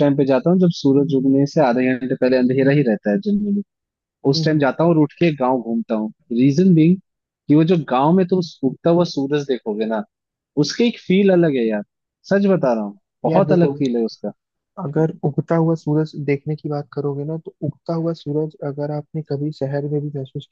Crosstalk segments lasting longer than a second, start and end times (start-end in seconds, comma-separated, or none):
none